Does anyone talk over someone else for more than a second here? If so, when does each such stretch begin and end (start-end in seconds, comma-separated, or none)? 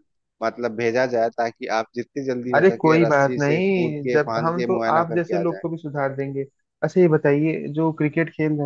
2.5-5.6